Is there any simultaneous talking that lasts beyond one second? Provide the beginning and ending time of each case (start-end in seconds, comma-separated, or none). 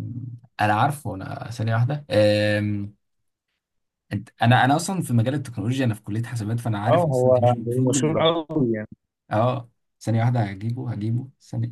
6.9-8.2